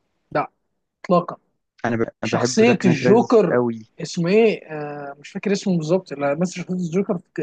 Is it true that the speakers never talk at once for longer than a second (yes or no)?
no